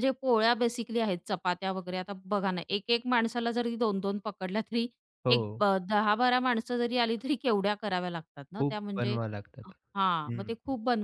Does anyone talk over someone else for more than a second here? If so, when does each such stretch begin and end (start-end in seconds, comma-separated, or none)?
none